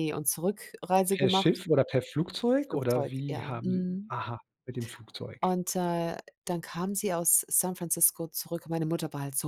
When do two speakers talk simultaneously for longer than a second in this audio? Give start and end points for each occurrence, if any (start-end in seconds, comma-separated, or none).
2.6-4.1